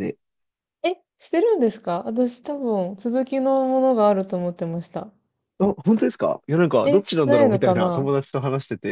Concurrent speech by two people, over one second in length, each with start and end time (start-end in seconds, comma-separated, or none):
6.8-8.1